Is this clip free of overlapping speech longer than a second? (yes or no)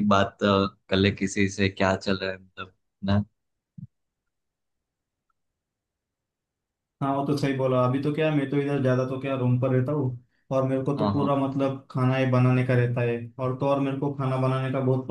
yes